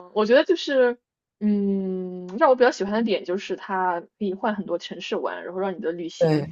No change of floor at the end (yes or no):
yes